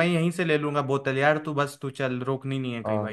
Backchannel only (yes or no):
no